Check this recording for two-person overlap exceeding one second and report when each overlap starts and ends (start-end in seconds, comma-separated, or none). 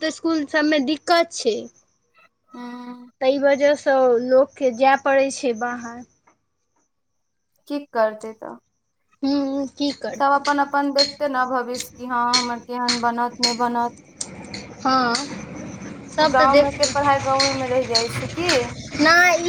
none